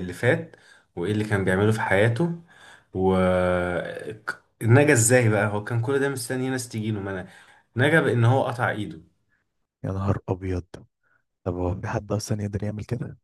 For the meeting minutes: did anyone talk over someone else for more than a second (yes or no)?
no